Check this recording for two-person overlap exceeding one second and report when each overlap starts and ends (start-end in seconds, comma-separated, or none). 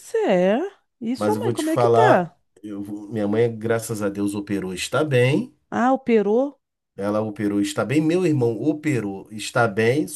1.2-2.4